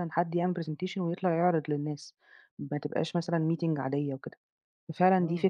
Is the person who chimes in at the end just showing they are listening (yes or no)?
yes